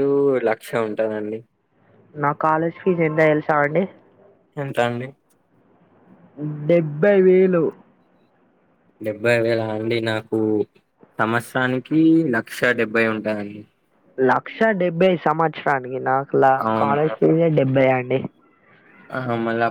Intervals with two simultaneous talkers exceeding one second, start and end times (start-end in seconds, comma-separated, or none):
none